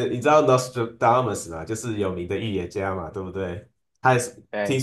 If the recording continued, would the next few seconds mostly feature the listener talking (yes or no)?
no